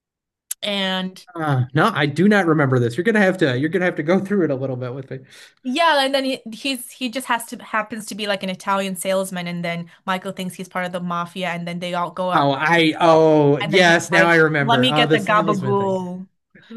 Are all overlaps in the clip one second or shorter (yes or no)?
no